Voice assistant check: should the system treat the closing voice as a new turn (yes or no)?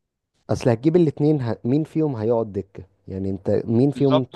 yes